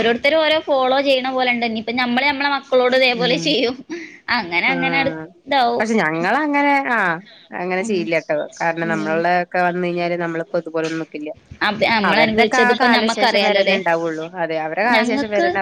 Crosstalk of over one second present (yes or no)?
yes